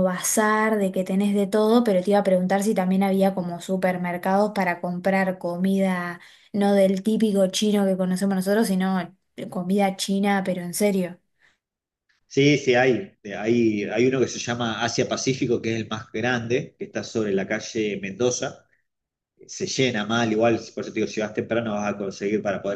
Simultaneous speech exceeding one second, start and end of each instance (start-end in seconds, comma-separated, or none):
none